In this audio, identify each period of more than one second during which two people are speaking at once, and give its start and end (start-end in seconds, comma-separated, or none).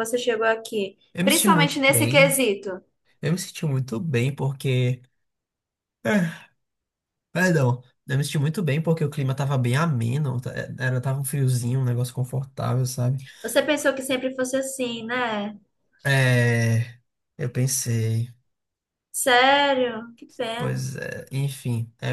1.1-2.4